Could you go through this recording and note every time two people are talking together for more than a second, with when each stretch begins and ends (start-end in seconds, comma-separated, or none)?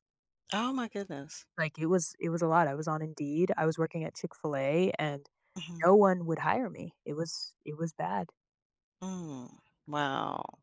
none